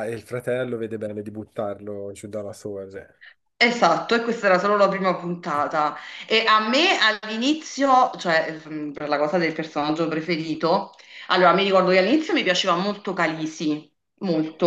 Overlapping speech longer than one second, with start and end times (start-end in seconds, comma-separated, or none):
none